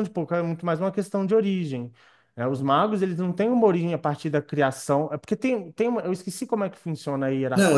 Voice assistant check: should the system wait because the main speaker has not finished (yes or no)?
no